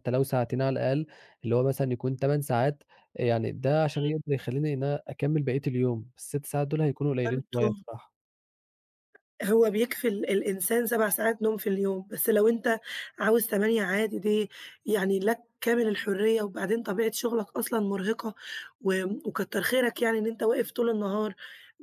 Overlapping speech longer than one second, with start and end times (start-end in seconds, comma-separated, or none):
none